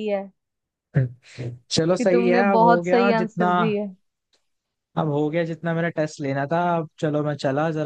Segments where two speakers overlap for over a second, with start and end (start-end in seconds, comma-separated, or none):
2.0-3.5